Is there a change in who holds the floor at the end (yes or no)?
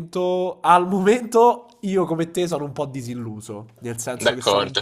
no